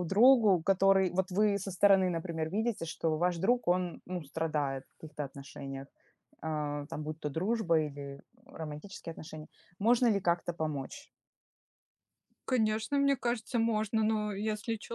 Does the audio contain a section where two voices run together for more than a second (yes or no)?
no